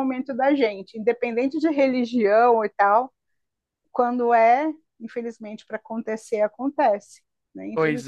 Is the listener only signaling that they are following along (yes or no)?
no